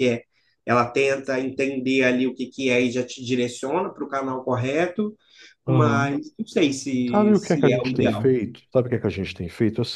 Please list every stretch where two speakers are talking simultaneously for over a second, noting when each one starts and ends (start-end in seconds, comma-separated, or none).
7.1-8.4